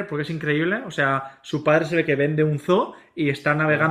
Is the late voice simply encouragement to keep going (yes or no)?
yes